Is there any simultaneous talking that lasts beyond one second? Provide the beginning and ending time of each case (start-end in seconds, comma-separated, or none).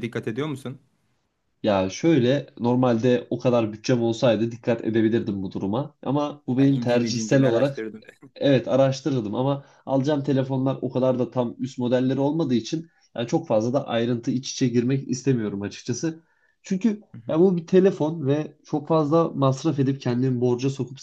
6.6-7.9